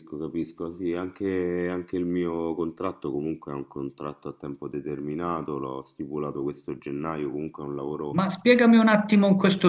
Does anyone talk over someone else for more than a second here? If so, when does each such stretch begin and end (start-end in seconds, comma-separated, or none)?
none